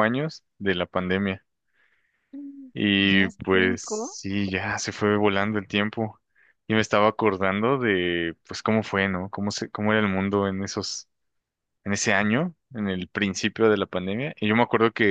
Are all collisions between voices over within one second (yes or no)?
no